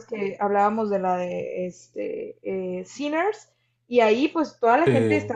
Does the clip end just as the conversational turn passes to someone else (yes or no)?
no